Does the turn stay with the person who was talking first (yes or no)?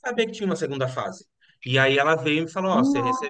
yes